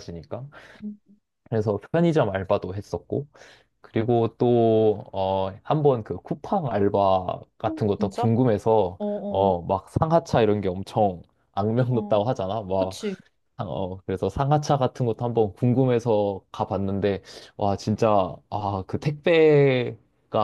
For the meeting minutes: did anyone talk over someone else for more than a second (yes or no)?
no